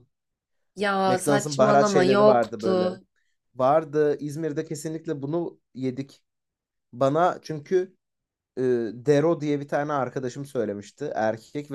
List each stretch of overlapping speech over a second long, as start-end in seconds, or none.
1.1-2.9